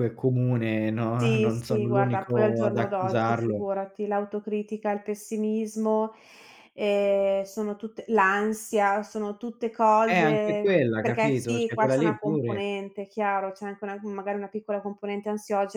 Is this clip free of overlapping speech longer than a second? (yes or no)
no